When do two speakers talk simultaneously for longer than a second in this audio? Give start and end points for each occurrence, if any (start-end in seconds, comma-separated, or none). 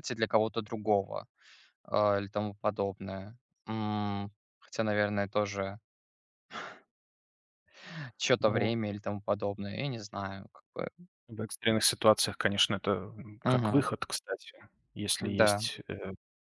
none